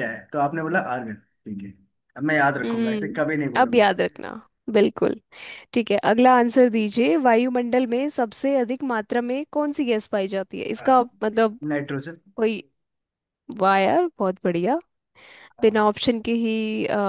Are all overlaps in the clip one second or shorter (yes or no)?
no